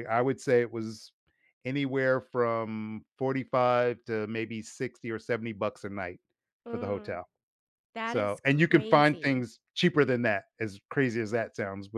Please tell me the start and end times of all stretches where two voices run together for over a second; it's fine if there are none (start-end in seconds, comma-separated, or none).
8.0-9.5